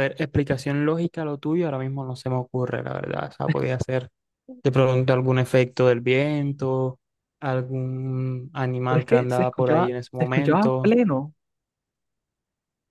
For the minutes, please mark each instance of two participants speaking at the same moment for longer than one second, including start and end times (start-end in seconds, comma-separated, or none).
8.9-10.9